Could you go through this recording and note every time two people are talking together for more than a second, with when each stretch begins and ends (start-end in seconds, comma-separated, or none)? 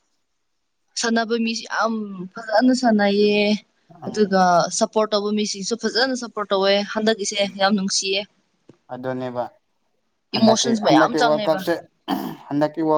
10.4-11.6